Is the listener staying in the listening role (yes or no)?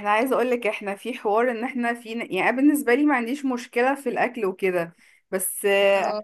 yes